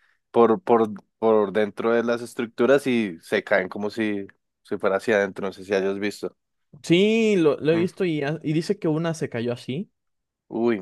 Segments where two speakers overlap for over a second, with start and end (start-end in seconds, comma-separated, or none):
none